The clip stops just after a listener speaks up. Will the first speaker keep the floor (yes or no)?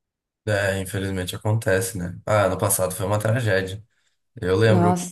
yes